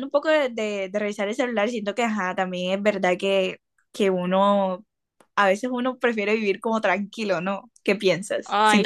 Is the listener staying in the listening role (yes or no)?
no